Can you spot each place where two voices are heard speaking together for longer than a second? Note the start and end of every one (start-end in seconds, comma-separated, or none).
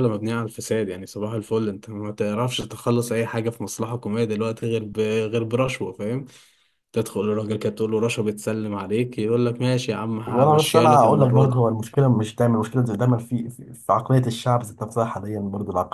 10.2-11.6